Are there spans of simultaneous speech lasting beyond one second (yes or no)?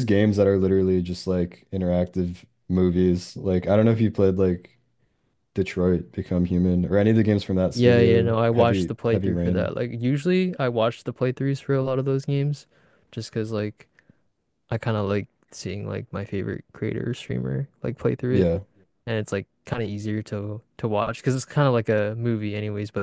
yes